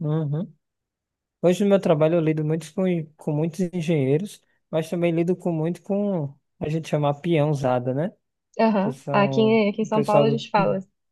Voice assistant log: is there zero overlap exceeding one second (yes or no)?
no